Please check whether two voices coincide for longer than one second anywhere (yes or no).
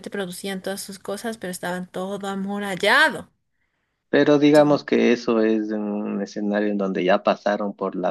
no